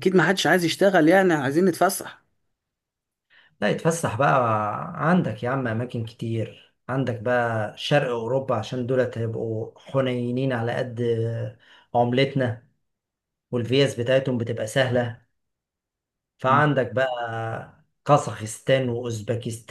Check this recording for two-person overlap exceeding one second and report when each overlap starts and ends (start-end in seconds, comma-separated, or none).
none